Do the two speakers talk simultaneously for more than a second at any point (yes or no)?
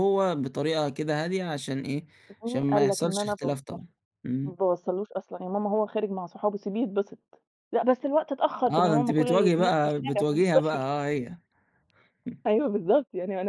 yes